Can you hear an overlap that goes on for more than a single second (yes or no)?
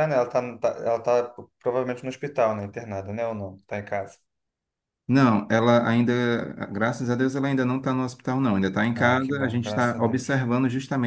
yes